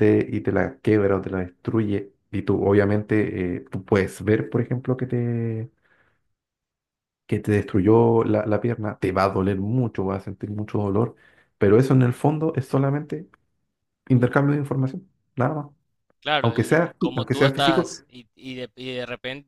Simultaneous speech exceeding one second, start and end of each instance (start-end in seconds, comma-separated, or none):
16.4-17.9